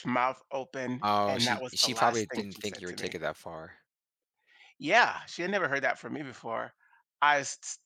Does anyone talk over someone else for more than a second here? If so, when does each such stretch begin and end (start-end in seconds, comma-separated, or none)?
1.0-3.2